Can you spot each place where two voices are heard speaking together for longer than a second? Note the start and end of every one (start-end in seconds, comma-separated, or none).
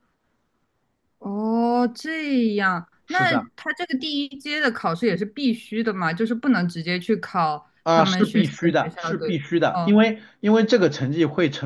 7.8-10.0